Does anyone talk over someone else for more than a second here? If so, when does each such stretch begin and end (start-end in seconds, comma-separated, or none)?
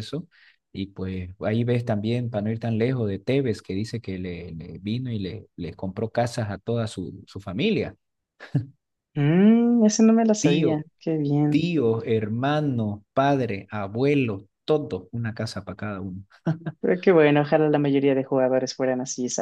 none